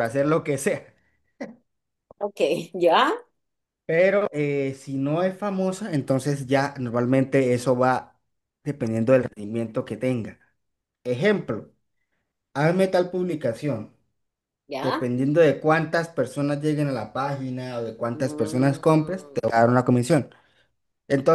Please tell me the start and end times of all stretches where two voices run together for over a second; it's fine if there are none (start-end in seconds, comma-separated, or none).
18.1-19.4